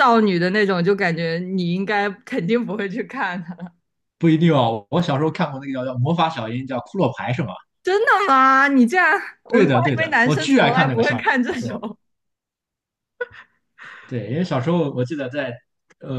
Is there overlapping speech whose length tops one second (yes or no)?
yes